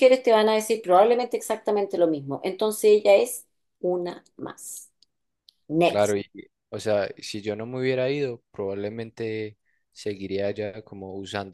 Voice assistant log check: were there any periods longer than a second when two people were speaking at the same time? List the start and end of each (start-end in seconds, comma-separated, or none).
none